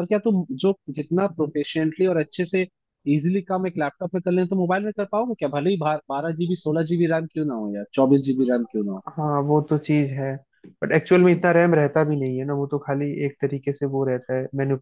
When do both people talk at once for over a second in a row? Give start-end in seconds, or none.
none